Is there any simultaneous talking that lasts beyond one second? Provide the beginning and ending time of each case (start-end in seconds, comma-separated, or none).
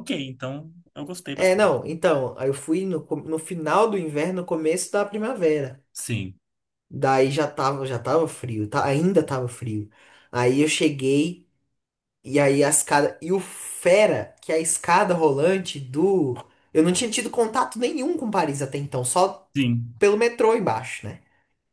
none